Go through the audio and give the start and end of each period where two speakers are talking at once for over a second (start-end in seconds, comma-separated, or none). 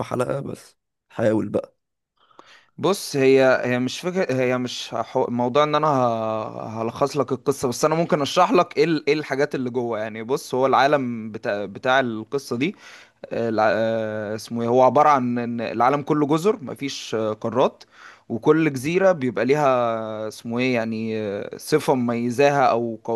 none